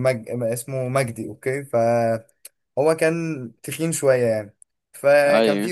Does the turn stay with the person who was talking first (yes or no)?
yes